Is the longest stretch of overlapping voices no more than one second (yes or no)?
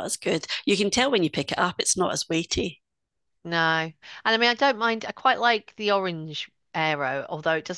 yes